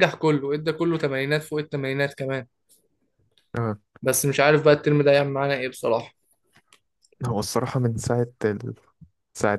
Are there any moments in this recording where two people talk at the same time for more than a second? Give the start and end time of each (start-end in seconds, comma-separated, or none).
none